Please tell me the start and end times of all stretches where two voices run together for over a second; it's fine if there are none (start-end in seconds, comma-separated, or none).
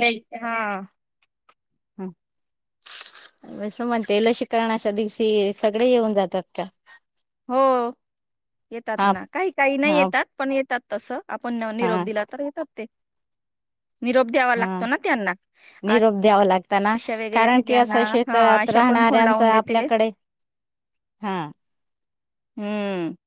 17.3-19.8